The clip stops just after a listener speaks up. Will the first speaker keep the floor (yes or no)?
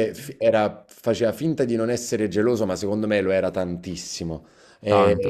yes